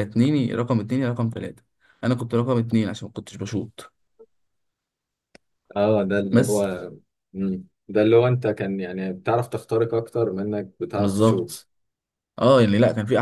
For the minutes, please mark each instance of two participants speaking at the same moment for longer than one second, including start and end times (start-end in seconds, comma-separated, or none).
none